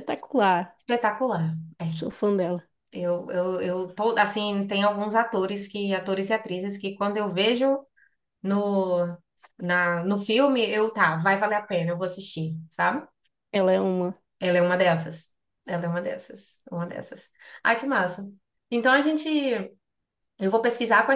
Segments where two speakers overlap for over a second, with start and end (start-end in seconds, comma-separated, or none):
none